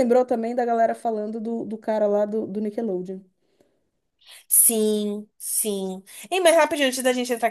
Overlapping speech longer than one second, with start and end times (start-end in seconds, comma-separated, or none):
none